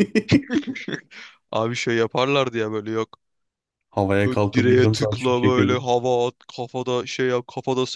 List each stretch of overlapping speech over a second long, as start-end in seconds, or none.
4.2-5.9